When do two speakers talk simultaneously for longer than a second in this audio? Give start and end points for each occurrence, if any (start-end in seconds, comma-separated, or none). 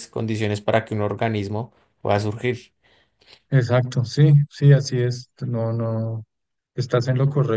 none